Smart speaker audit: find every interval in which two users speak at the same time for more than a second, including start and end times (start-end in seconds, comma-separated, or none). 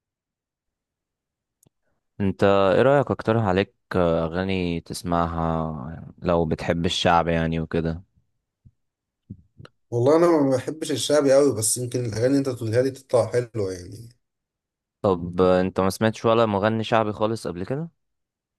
none